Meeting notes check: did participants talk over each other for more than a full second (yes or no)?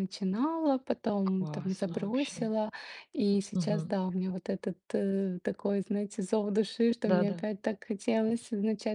yes